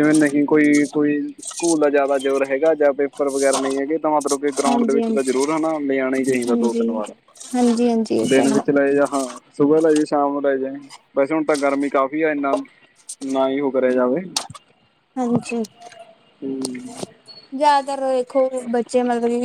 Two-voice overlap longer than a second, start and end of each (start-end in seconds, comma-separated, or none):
none